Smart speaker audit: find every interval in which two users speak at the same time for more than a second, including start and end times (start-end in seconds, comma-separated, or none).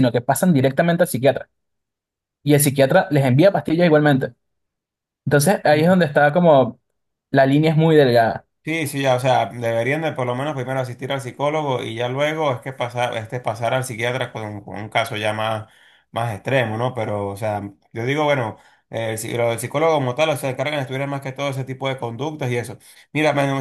none